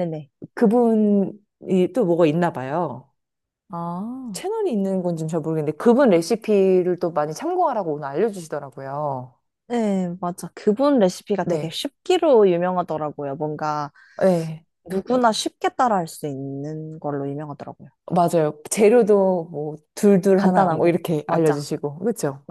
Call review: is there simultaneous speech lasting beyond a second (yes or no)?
yes